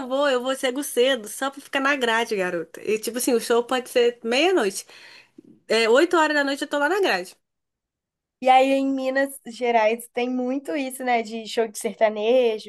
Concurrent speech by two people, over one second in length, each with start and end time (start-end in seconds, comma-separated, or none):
none